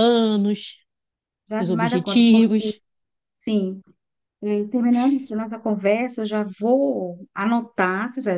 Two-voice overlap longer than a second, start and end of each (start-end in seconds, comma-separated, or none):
1.6-2.8